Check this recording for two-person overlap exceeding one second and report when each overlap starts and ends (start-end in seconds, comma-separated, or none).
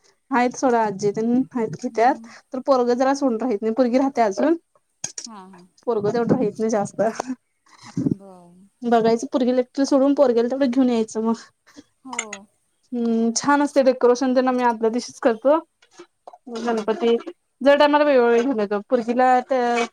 none